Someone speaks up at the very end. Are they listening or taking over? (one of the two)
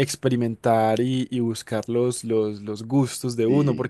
listening